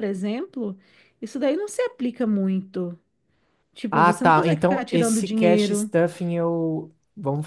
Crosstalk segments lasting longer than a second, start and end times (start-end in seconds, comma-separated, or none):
3.9-5.9